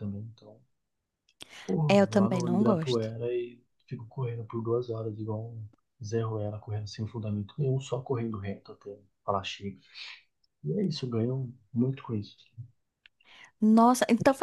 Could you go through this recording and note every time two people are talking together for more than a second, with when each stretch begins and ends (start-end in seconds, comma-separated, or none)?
1.9-3.1